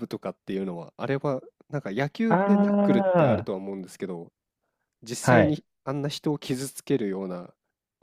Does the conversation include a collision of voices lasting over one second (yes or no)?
yes